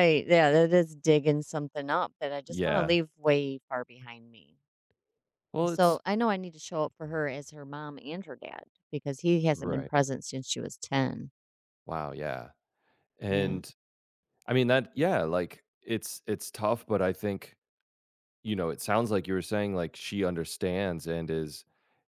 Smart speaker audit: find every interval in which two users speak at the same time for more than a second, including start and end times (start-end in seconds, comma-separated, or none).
none